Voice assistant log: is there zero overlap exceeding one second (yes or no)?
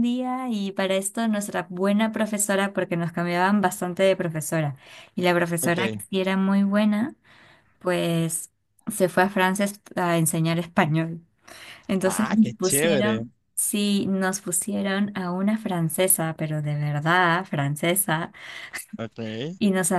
no